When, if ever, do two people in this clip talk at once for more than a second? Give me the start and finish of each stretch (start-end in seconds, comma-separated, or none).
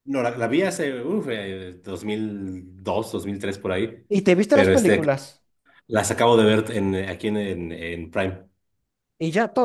none